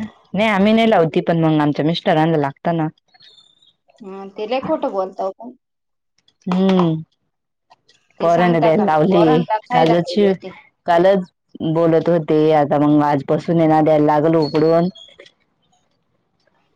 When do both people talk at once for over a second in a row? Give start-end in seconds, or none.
8.2-10.3